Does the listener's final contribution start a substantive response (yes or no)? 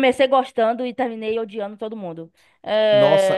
yes